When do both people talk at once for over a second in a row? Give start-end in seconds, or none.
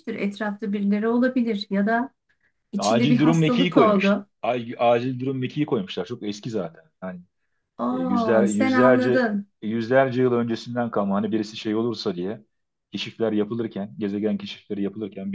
2.8-4.3, 7.9-9.5